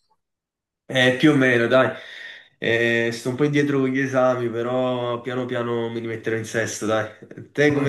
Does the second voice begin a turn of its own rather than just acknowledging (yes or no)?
no